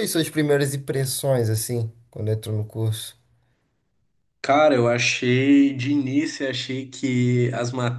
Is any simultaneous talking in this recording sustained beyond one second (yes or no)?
no